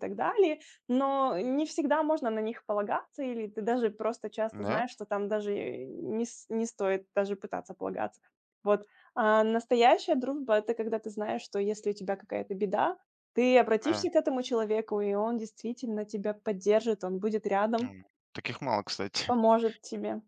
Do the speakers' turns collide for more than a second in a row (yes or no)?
no